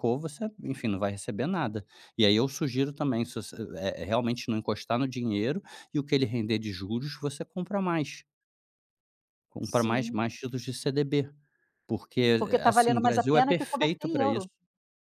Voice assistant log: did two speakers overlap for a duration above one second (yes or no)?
yes